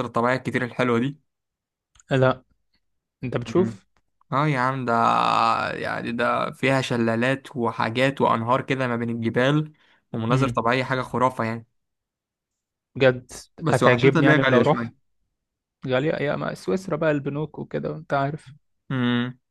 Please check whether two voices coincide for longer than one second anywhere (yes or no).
yes